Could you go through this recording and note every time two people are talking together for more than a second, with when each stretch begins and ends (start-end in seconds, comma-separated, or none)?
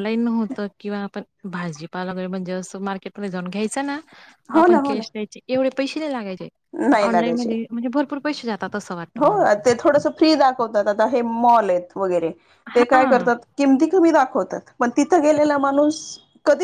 none